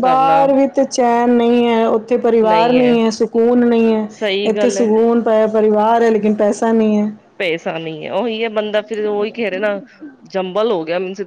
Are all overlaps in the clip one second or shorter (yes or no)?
yes